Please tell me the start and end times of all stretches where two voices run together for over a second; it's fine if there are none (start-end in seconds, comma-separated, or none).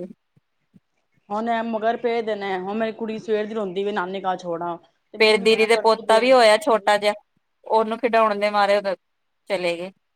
5.2-6.8